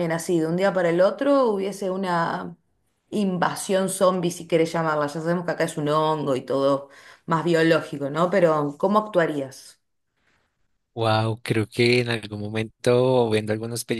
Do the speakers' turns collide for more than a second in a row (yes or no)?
no